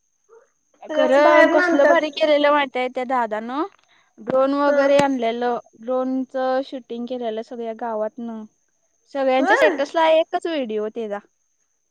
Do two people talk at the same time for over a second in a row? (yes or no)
yes